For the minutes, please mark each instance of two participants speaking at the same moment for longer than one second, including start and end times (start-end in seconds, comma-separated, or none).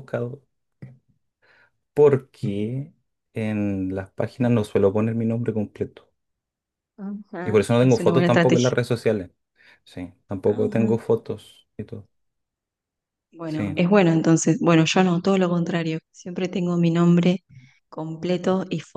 7.4-8.8